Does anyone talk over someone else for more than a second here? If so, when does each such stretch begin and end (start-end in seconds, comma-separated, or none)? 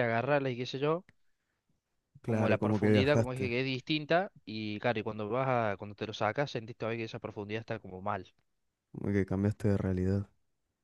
2.2-3.5